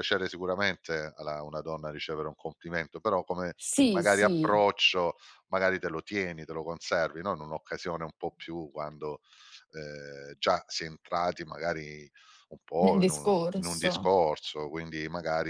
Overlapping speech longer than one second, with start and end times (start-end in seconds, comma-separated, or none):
12.8-14.1